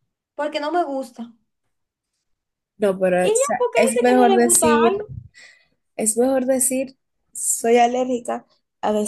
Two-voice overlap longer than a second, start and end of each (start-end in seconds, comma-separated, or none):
3.2-5.1